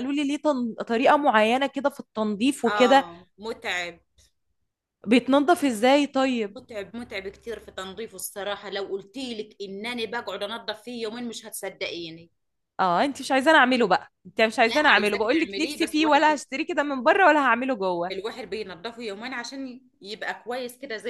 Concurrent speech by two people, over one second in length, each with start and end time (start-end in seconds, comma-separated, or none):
14.7-16.4